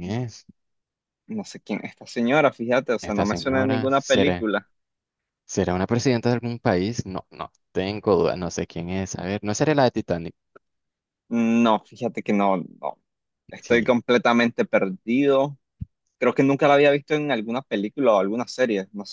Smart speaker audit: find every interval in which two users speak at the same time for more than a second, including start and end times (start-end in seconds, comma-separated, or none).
3.0-4.5